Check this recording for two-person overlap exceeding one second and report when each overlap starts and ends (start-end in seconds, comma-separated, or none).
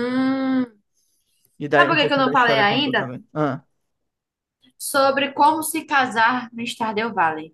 1.7-3.1